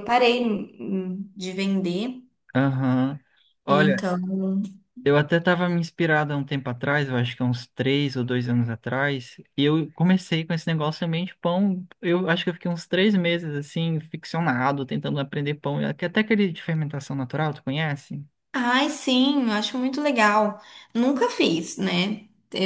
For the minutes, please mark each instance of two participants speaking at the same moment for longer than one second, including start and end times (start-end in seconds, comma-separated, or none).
none